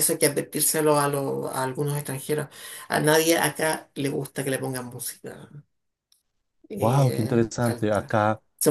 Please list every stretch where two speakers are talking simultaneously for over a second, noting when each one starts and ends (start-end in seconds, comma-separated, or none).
6.8-8.1